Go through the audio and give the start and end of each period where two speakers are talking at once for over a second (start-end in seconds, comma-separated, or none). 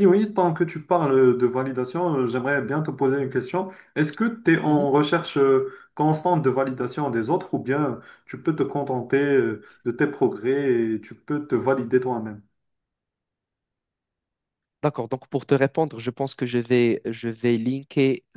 none